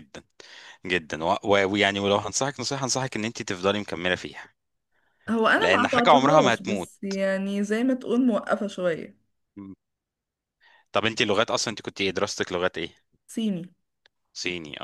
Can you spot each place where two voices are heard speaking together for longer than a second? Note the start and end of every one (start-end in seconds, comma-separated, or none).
5.6-6.9